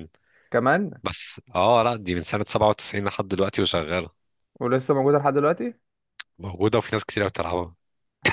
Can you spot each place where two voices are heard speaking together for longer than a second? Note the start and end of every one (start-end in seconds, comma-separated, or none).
none